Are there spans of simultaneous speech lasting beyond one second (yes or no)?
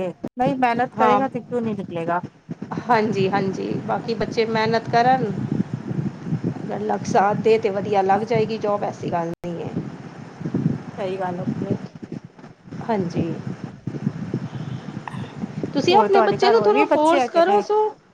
yes